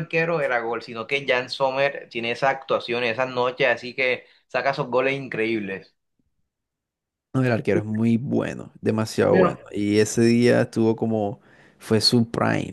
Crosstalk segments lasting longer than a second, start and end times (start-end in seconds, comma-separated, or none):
none